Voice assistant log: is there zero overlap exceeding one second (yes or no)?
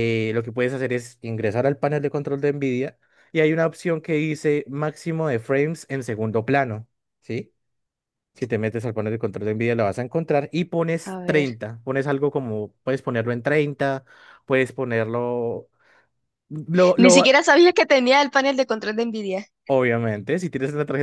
yes